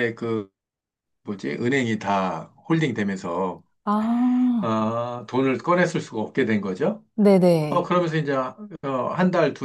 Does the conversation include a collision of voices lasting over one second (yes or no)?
no